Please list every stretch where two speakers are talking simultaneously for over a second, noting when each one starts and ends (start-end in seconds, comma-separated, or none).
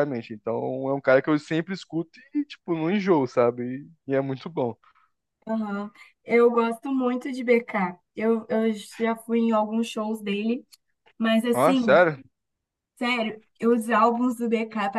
none